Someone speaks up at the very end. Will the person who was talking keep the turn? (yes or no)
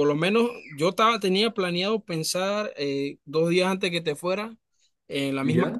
yes